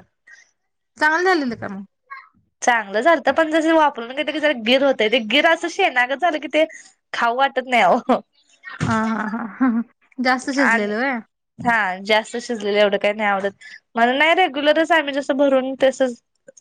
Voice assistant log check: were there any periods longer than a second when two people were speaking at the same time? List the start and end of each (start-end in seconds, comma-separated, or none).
none